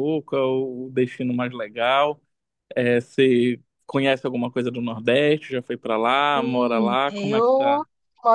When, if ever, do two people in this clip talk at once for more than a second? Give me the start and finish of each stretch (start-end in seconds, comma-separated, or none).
6.3-7.8